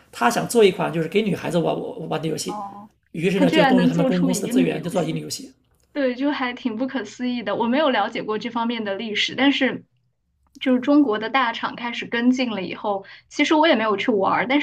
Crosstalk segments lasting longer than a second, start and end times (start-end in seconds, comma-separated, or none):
3.4-5.2